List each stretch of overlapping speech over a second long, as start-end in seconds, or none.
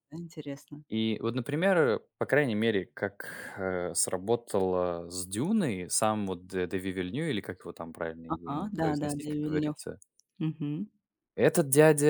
8.3-9.8